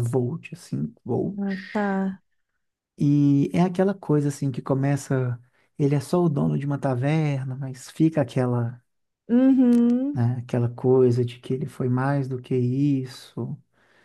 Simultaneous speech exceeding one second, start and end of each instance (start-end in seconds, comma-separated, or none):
none